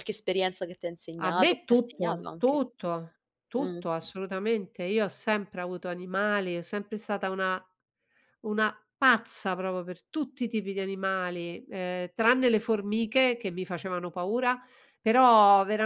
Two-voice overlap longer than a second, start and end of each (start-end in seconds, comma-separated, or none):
1.2-2.6